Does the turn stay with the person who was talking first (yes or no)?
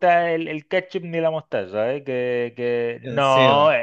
yes